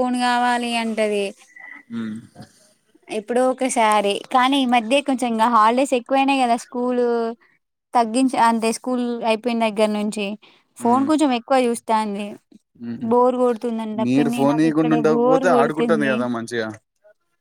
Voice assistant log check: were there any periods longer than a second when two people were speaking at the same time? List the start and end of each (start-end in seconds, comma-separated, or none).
14.5-16.1